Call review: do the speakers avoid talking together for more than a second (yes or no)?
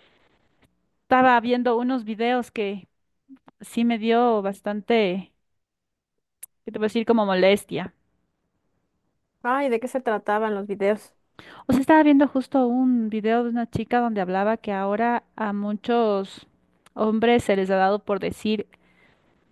yes